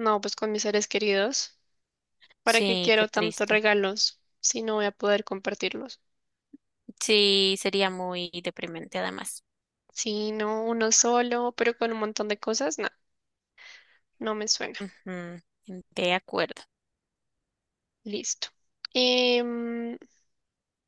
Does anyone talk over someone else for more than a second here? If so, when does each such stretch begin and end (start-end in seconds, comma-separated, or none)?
2.4-3.6